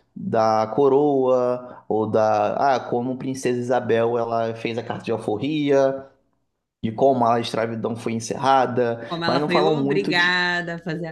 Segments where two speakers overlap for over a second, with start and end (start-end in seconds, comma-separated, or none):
9.1-10.4